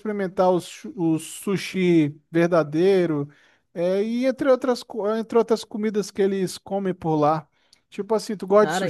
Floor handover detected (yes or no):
yes